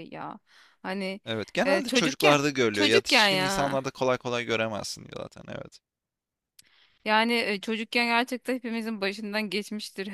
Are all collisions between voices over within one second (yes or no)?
no